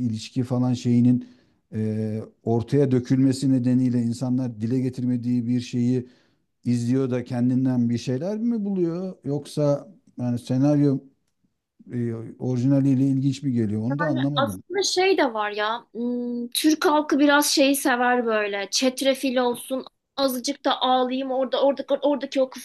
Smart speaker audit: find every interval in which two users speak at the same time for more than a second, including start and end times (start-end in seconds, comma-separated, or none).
none